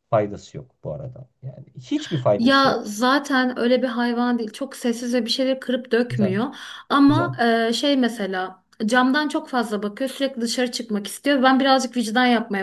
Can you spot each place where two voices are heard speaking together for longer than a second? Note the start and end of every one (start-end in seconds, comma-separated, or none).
none